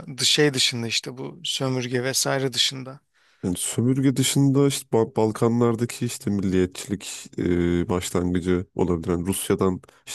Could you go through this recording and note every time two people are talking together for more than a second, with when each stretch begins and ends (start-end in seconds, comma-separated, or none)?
none